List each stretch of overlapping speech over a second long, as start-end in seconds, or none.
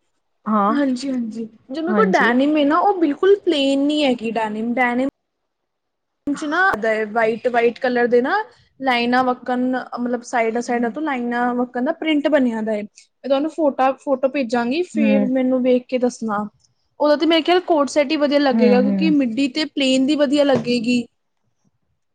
none